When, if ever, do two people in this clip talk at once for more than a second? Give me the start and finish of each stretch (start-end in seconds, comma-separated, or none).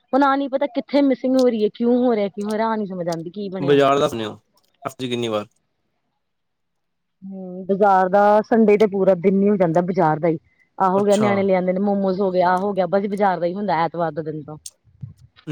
none